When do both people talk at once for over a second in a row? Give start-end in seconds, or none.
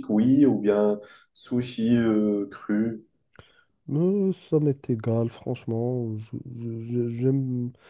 none